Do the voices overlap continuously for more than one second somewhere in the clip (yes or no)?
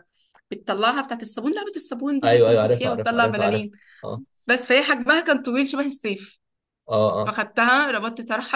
yes